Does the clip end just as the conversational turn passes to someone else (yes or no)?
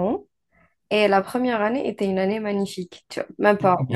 yes